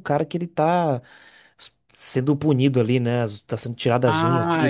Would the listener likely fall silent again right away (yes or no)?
no